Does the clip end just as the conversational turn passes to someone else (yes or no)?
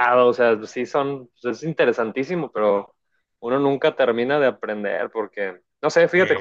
no